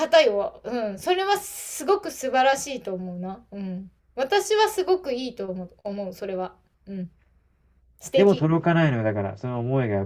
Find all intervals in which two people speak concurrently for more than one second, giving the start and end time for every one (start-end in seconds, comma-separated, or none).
none